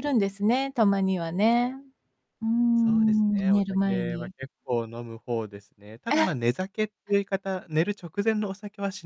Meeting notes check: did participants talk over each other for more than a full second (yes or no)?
yes